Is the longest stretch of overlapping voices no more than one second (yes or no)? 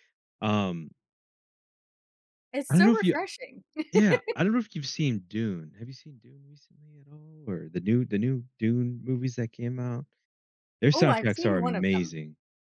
no